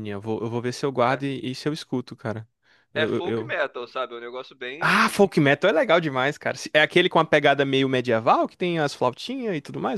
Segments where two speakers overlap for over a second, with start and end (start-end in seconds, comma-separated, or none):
none